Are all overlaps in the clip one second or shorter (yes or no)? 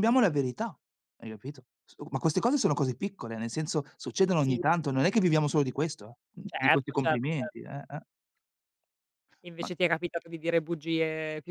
no